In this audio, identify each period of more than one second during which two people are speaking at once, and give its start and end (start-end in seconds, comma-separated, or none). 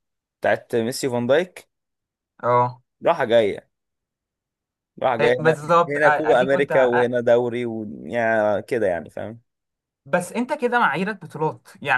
5.2-7.1